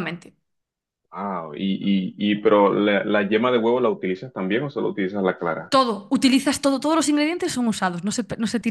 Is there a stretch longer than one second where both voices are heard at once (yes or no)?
no